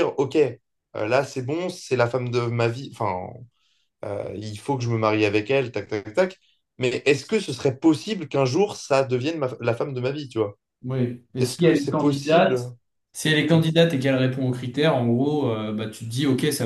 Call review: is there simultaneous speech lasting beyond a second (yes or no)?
yes